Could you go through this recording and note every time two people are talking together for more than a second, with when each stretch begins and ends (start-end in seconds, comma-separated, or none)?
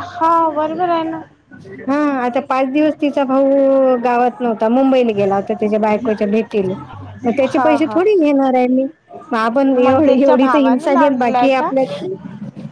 9.8-11.7